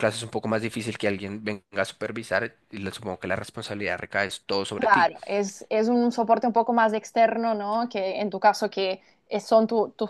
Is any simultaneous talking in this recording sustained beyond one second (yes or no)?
no